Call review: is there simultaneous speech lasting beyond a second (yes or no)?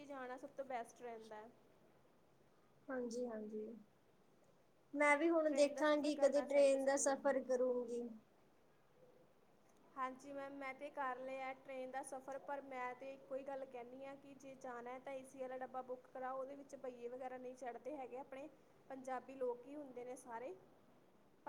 yes